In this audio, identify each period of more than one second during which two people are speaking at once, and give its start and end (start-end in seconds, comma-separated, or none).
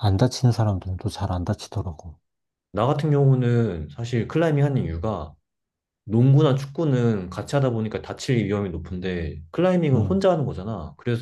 none